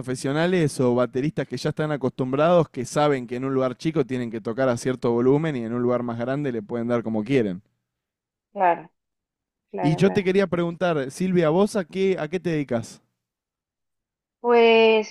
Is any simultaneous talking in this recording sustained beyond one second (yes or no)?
no